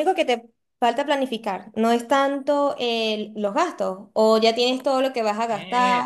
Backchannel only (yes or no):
no